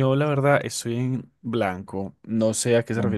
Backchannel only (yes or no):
yes